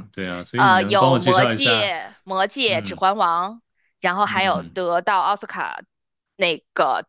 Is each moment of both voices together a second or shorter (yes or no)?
no